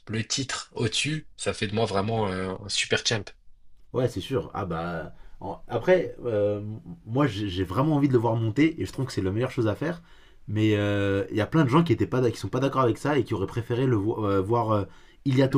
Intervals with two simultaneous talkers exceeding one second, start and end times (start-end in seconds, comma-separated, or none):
none